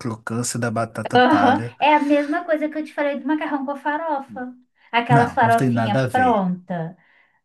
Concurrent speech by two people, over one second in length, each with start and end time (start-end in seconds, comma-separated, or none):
5.1-6.4